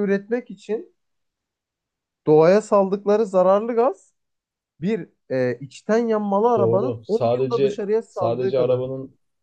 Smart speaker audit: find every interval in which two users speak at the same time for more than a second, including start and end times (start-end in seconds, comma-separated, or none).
6.6-8.8